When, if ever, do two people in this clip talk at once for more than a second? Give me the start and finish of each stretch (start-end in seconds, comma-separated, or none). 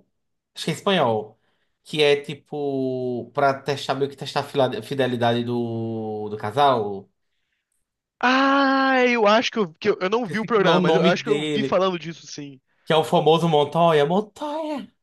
10.3-11.8